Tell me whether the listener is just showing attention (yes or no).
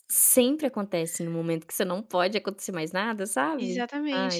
no